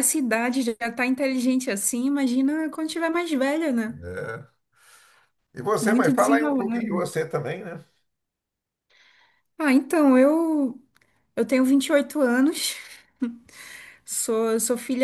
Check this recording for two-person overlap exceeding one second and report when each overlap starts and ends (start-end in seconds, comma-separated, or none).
5.8-7.0